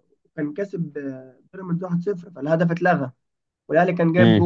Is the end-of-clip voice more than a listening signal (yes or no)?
no